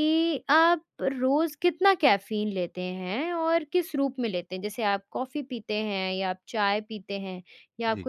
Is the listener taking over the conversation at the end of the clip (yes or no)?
no